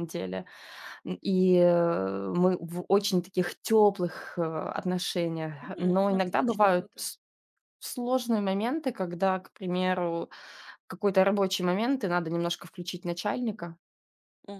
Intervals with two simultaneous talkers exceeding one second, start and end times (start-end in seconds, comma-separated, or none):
5.6-7.0